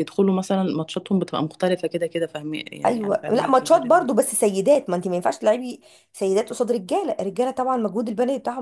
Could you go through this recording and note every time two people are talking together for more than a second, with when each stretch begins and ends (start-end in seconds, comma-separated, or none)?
2.9-4.1